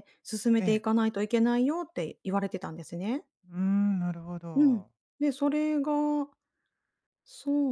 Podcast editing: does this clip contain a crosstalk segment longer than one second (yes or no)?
no